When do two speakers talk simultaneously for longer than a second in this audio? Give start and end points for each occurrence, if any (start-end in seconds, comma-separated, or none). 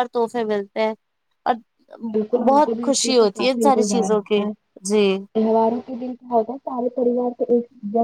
2.5-4.4